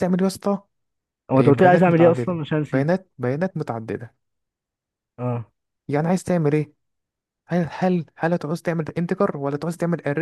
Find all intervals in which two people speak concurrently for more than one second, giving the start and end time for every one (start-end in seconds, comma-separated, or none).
1.3-2.9